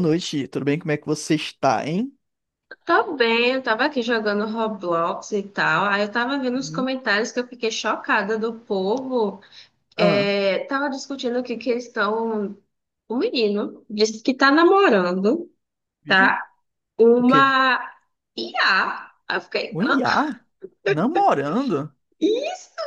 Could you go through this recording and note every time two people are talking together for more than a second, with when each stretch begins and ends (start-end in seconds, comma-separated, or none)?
none